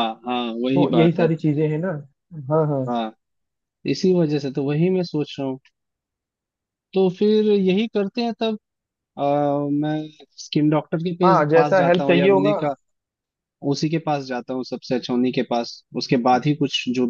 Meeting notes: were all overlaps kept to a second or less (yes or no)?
no